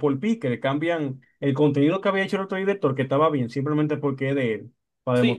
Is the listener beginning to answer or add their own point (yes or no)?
yes